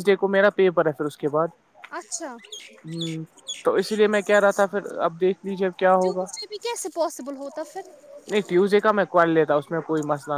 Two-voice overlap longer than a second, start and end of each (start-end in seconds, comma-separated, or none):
none